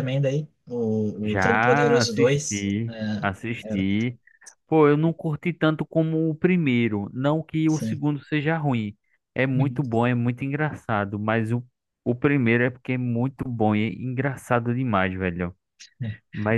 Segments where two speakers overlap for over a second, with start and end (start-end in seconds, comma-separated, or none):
1.2-2.7